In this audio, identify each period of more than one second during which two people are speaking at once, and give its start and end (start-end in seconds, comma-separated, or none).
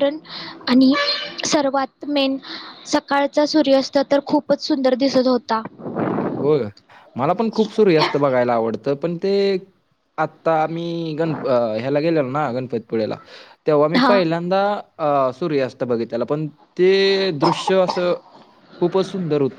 none